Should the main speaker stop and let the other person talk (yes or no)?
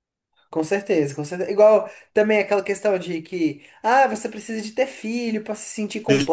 yes